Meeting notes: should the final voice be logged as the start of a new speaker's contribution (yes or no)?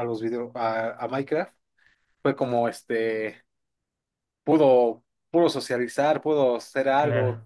no